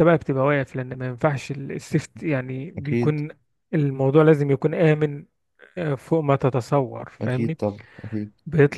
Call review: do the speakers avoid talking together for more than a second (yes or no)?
yes